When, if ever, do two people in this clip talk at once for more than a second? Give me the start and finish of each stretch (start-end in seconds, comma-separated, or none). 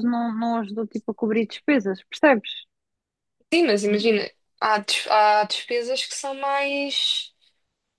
none